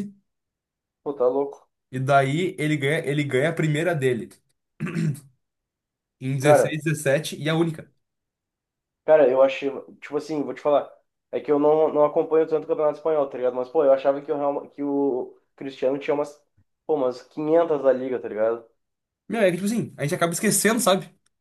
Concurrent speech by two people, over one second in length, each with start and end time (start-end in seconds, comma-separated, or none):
none